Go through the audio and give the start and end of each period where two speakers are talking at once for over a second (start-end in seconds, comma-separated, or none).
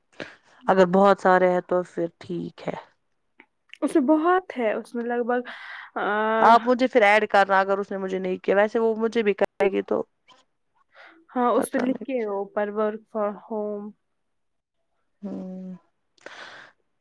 none